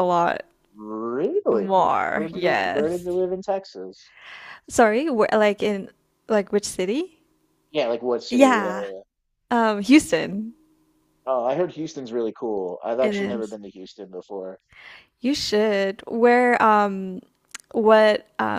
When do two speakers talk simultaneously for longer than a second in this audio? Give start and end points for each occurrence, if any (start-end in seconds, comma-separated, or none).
1.5-3.1